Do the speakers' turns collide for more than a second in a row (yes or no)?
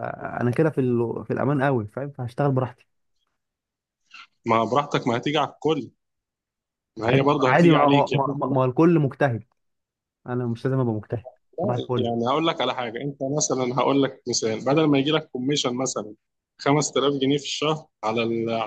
yes